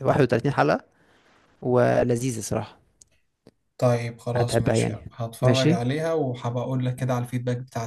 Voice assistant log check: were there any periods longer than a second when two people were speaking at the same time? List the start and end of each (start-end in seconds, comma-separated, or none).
4.3-5.9